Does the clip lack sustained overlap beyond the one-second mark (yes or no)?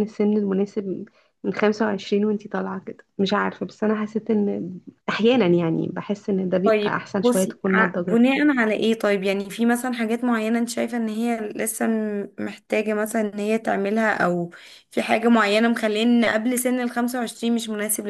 no